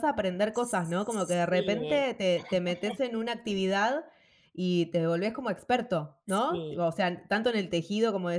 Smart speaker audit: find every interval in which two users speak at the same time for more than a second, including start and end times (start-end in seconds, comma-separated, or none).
0.5-2.0